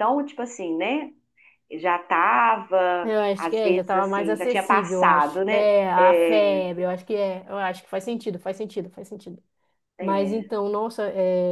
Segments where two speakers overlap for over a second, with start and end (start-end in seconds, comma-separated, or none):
3.0-6.6